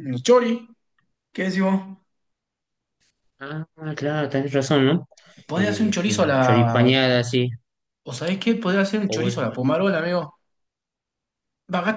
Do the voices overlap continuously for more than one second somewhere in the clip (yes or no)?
yes